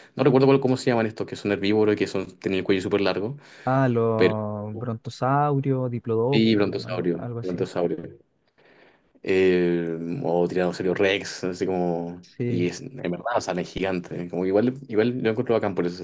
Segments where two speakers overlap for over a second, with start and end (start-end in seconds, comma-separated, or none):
6.3-7.6